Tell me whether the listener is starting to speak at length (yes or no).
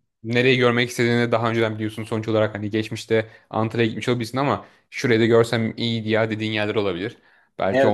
yes